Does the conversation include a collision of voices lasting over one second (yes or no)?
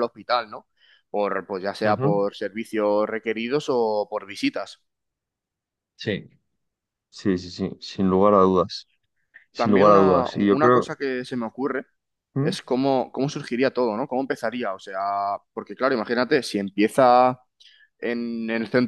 yes